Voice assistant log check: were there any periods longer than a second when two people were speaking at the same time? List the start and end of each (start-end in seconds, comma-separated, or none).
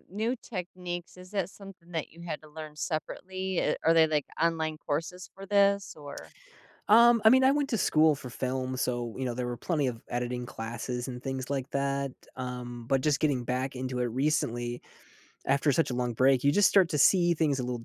none